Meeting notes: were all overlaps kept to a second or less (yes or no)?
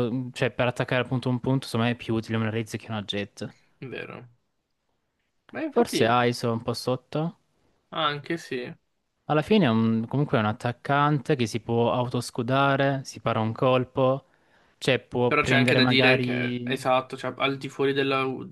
no